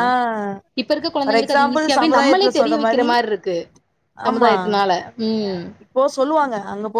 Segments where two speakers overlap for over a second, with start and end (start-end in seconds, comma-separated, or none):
1.2-3.1